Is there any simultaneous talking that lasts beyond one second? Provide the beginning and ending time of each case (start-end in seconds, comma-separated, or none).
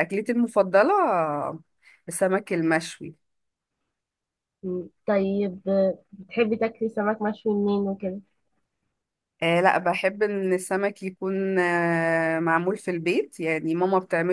none